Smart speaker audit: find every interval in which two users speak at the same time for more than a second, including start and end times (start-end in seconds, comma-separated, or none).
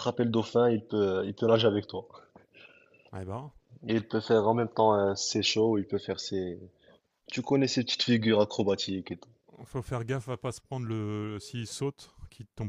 none